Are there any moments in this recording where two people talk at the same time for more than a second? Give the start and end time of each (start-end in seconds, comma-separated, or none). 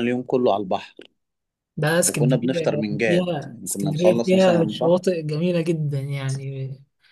2.0-5.0